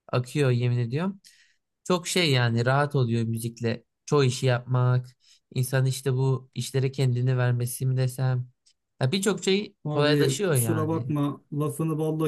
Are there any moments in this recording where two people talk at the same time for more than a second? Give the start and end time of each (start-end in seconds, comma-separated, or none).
9.8-11.1